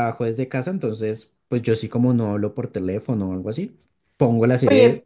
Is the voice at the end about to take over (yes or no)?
yes